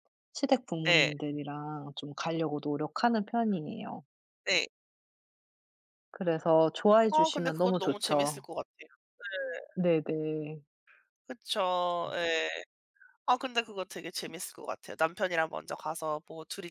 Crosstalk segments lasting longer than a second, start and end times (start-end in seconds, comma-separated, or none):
7.1-8.4